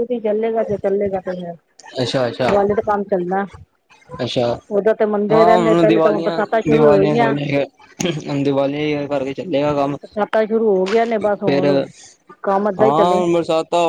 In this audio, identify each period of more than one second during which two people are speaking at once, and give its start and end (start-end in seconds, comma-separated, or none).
5.3-7.3